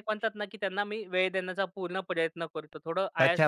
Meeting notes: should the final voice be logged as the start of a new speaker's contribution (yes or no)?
yes